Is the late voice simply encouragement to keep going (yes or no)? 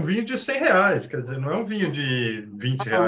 no